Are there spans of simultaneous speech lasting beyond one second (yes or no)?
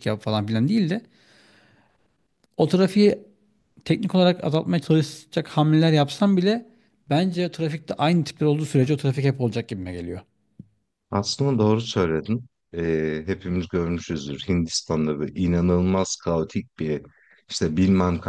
no